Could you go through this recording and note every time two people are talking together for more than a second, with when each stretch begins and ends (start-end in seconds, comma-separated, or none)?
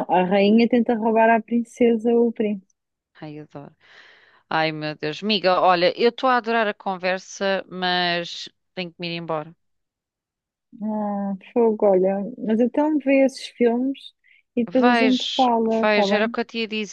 14.8-16.4